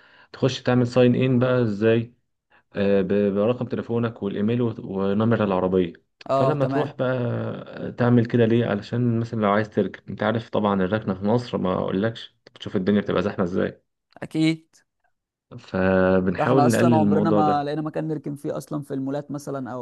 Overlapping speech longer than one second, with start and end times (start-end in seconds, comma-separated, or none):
16.4-17.7